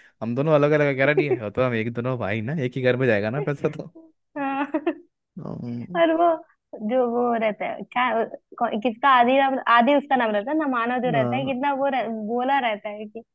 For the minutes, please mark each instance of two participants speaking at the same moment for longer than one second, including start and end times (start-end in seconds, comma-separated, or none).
none